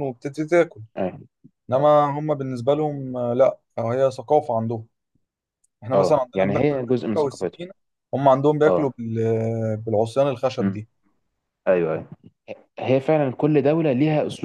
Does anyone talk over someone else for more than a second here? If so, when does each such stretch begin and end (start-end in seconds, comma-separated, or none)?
5.9-7.6